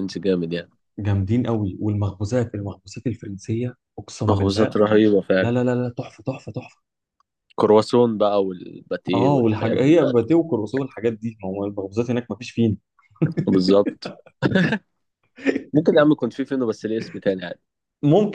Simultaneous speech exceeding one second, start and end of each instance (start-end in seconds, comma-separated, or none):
9.1-10.4